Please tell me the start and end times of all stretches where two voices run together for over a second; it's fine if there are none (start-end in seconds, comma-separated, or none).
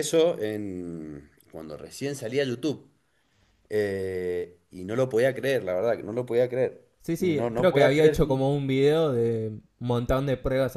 7.0-8.4